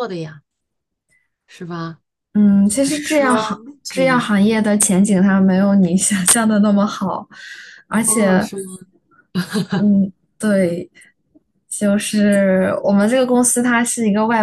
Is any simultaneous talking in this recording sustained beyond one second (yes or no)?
yes